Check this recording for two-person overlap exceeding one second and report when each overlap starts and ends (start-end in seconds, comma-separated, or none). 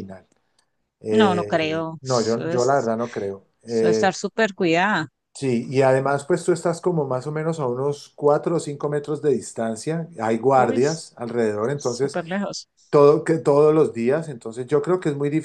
1.1-2.9